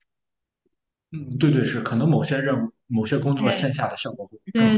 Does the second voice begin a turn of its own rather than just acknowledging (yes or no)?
yes